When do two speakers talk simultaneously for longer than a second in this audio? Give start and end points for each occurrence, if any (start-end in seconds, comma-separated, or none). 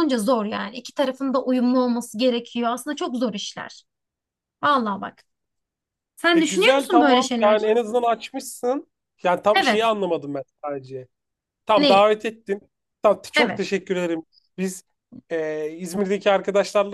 6.3-7.7